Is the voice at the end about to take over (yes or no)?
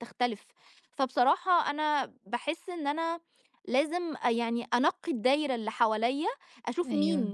no